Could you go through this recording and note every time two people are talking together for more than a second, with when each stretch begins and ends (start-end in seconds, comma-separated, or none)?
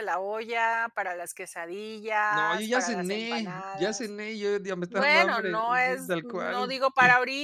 2.3-4.1, 4.9-6.7